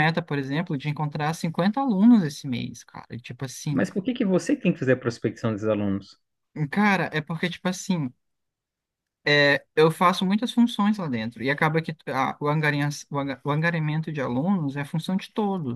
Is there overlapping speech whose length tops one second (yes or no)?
no